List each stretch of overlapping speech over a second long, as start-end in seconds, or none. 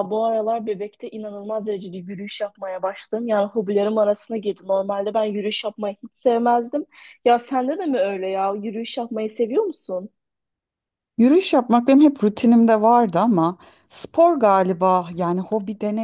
none